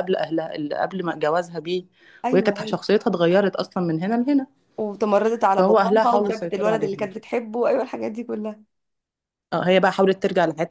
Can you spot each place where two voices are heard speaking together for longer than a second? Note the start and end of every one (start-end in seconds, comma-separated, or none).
5.6-7.1